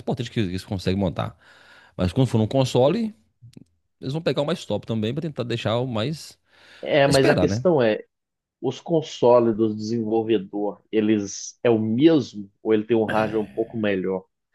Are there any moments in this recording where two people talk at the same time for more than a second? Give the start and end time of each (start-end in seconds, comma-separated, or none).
none